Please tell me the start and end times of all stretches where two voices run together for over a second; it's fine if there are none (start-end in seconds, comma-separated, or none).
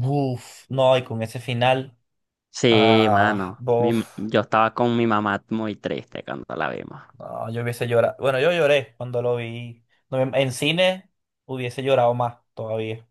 2.7-4.0